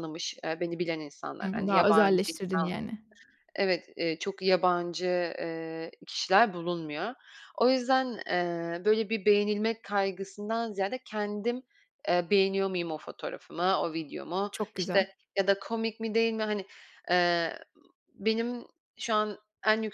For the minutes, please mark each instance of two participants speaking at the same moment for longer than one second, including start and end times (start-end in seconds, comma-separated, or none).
1.4-2.7